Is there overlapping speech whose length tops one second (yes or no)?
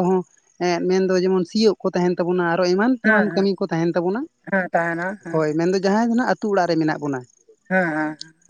no